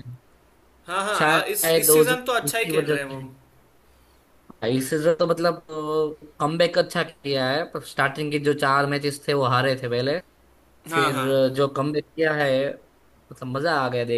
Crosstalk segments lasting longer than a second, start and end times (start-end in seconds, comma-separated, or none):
1.2-3.2